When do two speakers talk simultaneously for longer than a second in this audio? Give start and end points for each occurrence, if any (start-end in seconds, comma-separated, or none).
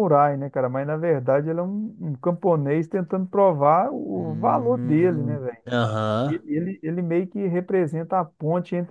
4.1-5.6